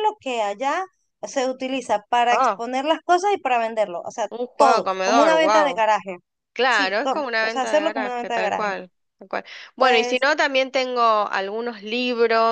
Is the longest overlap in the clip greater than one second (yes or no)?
yes